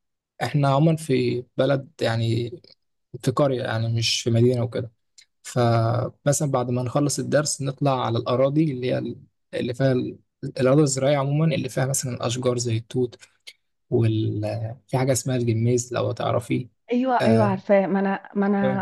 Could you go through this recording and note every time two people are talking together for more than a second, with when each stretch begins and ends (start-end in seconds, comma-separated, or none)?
none